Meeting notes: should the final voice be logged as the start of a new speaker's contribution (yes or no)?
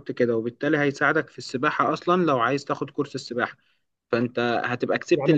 yes